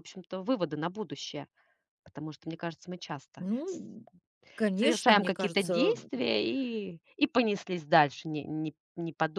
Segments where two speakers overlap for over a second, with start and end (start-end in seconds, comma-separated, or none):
4.7-6.1